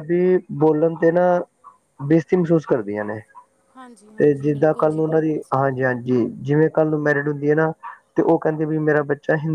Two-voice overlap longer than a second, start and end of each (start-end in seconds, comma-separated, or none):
4.2-6.2